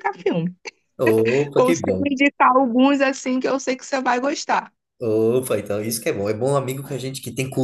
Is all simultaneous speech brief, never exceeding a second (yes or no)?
yes